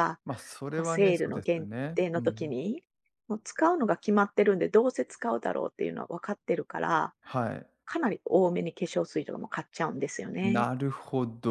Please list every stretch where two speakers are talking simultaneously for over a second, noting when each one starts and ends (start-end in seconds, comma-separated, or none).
0.7-2.5